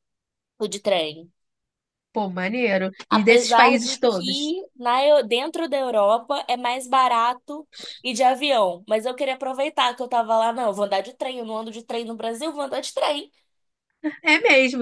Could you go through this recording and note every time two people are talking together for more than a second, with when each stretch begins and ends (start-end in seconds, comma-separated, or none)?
3.1-4.5